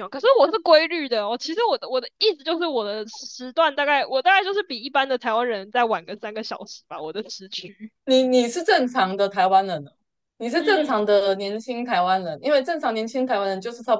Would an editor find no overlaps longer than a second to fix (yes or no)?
yes